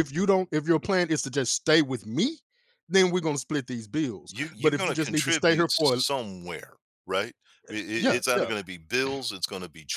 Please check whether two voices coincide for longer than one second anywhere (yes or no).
yes